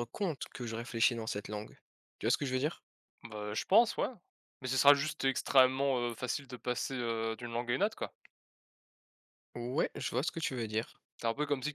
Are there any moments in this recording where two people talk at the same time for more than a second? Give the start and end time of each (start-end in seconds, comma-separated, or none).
none